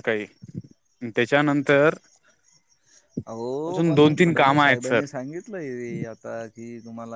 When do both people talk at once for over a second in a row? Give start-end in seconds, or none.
3.7-5.0